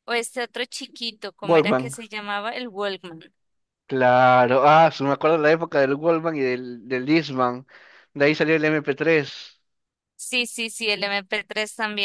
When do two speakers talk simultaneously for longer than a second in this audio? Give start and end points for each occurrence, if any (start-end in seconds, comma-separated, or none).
none